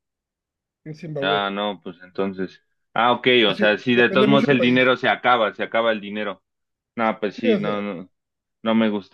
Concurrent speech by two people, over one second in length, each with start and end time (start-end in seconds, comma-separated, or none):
3.5-4.8